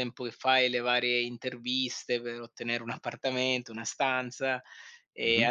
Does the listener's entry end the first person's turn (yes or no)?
no